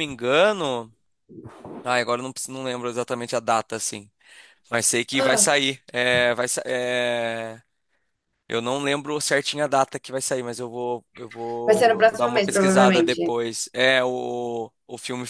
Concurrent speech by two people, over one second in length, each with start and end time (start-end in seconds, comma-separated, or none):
11.6-13.3